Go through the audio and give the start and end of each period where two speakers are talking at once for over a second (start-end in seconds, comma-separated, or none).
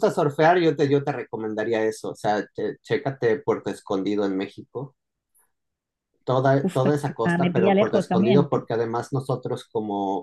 6.7-8.6